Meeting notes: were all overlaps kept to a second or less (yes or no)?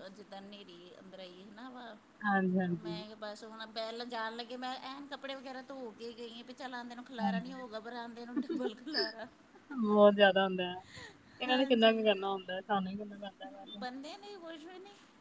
yes